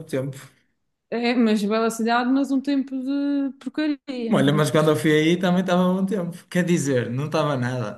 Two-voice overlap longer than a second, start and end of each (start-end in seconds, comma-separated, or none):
none